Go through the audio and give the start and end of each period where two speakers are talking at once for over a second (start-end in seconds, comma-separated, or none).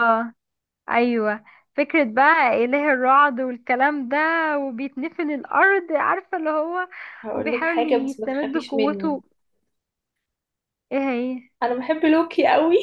7.3-9.2